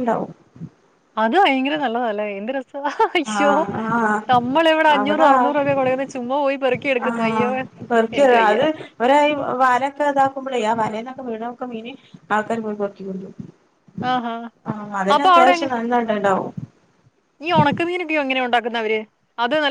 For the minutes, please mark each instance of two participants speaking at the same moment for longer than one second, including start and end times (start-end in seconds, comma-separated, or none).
none